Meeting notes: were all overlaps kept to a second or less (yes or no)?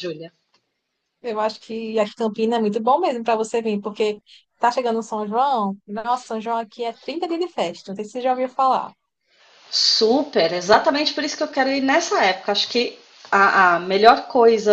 yes